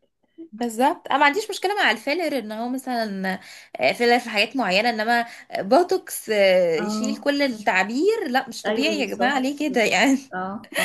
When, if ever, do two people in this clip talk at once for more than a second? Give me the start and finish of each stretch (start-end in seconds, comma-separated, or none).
8.7-10.2